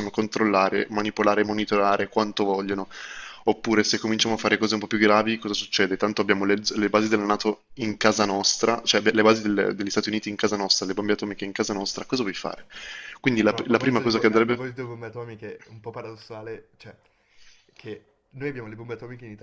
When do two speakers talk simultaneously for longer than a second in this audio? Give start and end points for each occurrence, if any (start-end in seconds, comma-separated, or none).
13.4-14.7